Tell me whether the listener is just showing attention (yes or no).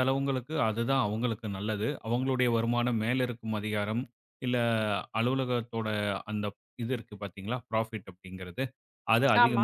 yes